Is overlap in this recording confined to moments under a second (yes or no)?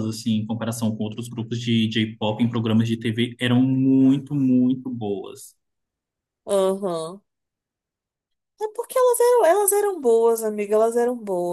yes